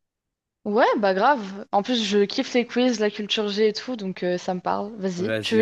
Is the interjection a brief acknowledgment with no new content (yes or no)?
no